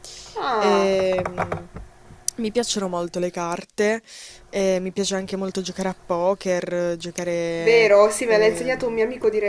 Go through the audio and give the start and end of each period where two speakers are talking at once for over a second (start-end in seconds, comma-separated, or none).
7.6-9.0